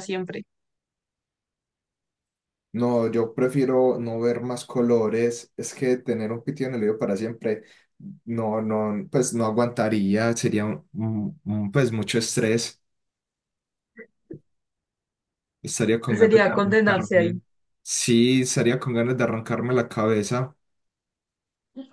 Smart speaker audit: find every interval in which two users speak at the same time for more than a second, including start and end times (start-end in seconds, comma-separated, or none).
16.1-17.4